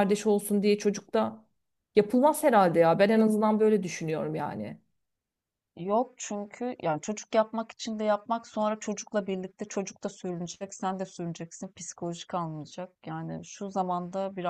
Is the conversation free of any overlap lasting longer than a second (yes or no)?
yes